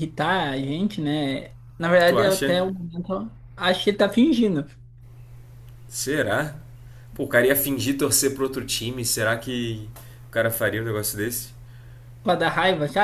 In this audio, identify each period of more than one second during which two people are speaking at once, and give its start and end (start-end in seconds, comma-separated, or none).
none